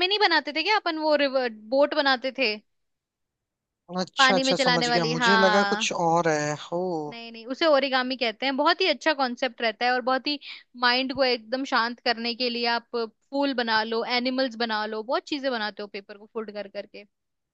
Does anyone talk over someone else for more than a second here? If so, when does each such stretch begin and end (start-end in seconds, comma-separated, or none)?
4.2-5.9